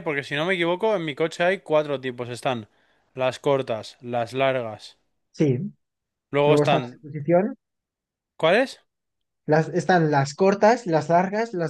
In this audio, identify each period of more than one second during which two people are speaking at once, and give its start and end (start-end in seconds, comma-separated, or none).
none